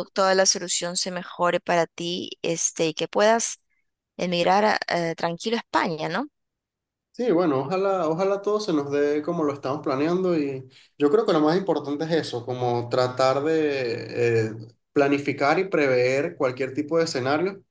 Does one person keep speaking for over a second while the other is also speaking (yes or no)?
no